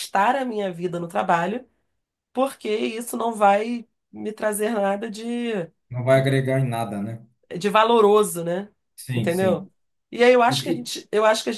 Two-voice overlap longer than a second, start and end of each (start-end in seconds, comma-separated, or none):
none